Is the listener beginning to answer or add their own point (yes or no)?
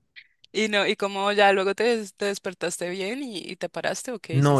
yes